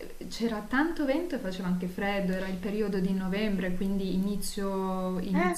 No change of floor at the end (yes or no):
yes